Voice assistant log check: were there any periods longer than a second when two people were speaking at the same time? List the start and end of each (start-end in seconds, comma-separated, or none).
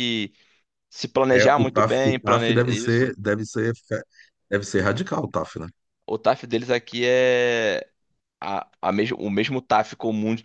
1.3-3.1